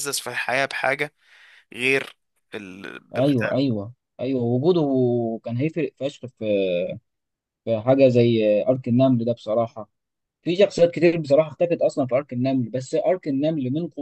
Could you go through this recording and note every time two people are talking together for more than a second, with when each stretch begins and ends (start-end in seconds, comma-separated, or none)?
none